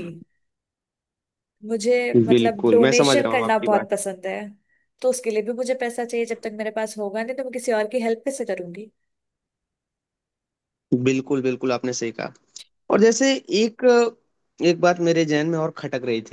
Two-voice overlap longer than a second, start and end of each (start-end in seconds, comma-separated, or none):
2.3-3.9